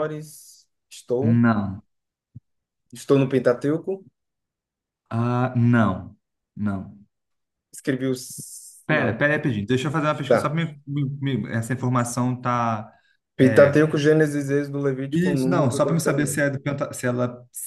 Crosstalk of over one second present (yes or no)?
yes